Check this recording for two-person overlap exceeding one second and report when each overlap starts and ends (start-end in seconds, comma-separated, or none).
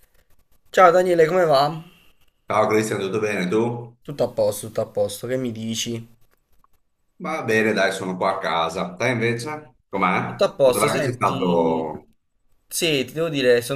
10.2-11.9